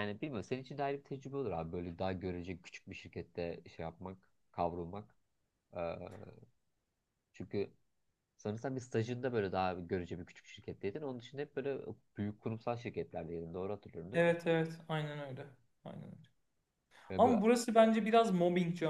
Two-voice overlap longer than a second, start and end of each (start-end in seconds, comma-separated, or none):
none